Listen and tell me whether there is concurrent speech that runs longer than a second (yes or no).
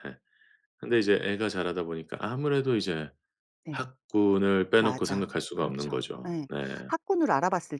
yes